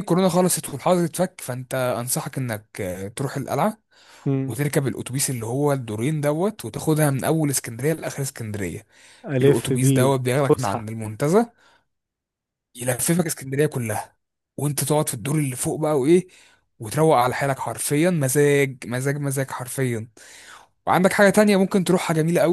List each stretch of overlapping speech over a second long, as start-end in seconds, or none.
9.4-10.9